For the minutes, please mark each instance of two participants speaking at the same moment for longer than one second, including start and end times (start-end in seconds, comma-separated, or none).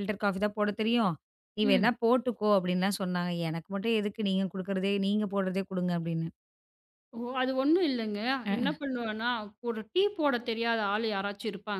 none